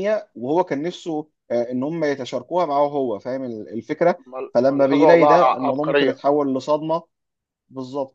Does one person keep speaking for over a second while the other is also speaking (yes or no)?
yes